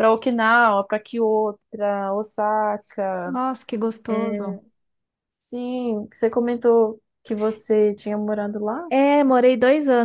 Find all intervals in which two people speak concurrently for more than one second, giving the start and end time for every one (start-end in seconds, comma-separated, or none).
none